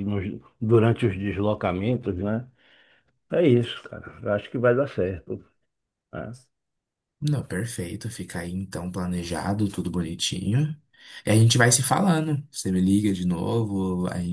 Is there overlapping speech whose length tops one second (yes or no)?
no